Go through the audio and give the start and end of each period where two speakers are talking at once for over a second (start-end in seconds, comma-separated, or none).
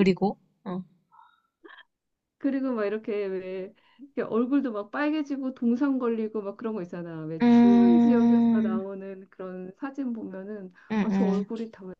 7.4-8.8